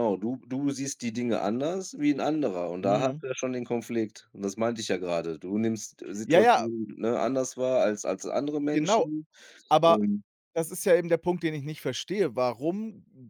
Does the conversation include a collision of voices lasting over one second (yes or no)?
no